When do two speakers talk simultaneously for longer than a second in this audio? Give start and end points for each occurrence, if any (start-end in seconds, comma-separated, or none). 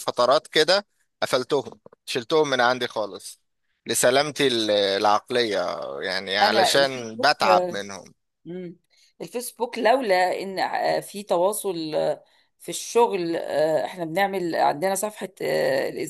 6.4-7.8